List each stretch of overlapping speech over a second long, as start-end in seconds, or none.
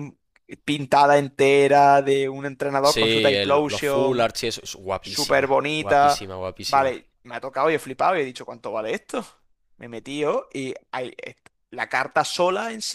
2.8-4.3, 5.0-7.0